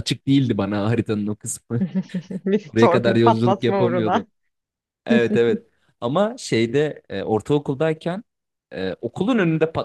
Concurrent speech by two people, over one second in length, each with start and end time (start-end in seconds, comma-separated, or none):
2.7-4.3